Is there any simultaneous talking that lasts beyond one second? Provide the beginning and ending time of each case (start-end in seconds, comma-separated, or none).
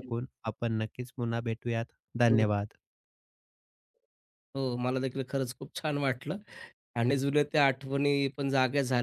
none